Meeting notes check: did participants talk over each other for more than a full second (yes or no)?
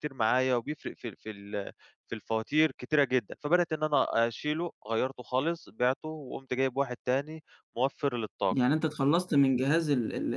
no